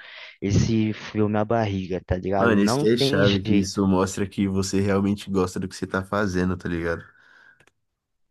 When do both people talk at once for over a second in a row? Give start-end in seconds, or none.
2.4-3.8